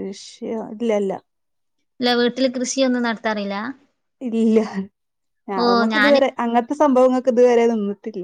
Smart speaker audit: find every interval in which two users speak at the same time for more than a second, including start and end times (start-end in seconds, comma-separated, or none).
none